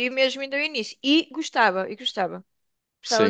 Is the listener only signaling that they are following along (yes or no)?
no